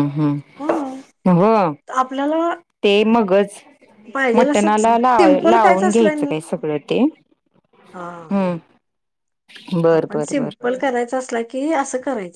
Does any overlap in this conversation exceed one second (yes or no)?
yes